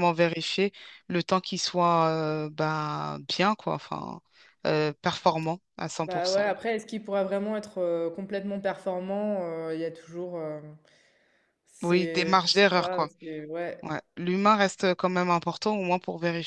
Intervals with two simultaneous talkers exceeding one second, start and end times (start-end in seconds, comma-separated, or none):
11.8-13.1